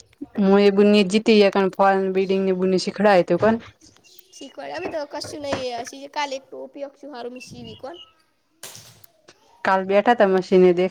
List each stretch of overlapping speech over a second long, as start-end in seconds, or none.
none